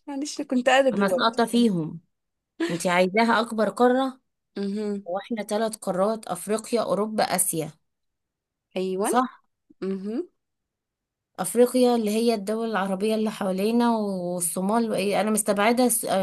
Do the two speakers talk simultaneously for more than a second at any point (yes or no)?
no